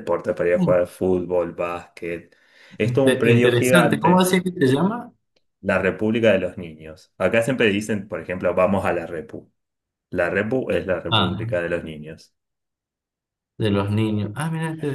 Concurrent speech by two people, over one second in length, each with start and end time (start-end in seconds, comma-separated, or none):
2.8-4.3